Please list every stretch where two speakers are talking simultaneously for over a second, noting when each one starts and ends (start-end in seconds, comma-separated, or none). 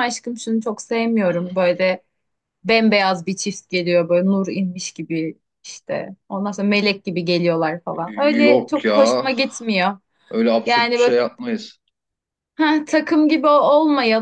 none